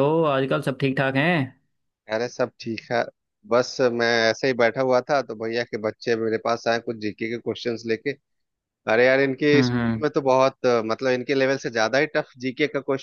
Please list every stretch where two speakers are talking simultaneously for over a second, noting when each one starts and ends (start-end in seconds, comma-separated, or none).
none